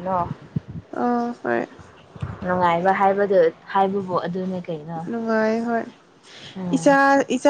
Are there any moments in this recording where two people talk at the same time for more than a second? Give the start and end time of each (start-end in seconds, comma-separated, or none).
none